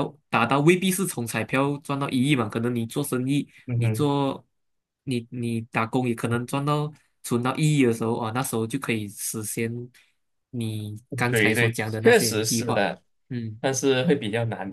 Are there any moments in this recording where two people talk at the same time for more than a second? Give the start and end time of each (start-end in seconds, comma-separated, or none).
11.3-12.9